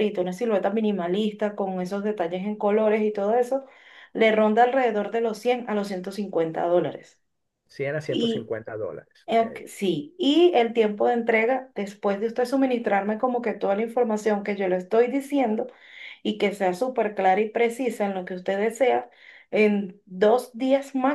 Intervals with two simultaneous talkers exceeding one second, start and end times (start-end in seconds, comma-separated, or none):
none